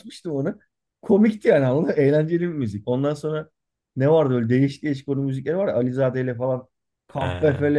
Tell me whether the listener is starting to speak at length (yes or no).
no